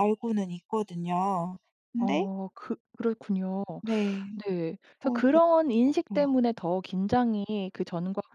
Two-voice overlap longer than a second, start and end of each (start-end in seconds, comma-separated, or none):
5.0-6.2